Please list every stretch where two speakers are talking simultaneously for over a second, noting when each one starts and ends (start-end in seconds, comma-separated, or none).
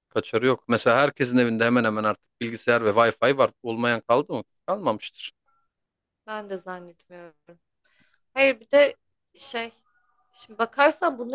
none